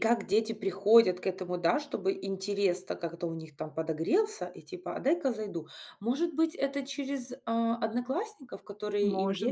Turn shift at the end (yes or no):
no